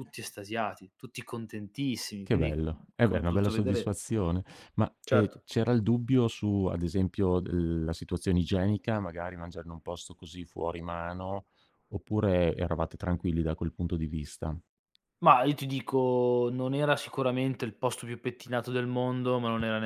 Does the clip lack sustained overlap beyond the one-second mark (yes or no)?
no